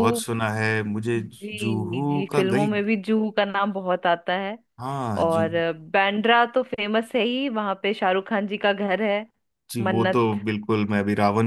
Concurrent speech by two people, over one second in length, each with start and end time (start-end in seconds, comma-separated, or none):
1.2-2.7